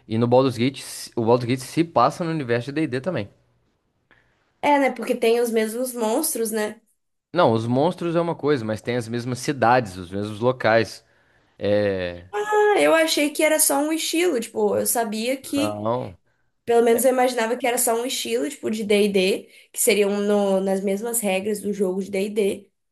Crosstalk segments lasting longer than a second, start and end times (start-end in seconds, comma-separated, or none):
none